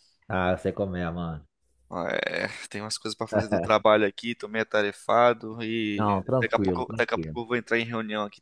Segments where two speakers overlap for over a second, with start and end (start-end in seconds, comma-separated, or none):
6.0-7.4